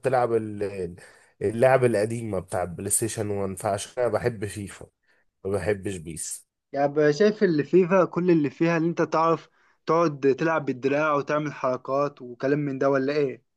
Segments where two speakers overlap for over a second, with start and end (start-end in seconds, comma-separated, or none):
none